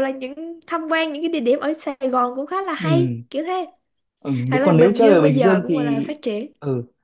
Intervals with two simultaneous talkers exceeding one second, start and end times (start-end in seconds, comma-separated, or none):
4.5-6.0